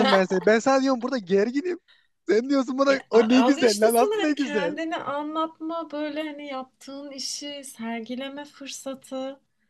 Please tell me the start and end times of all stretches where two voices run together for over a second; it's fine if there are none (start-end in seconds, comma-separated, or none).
2.9-4.7